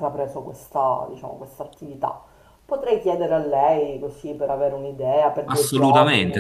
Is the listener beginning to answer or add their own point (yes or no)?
yes